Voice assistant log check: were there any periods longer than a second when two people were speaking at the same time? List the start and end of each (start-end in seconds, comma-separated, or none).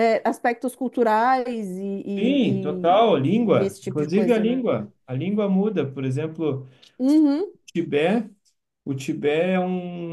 2.2-4.6